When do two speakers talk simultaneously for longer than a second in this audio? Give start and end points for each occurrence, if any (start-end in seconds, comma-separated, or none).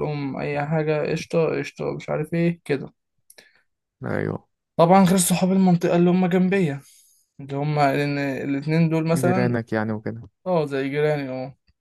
none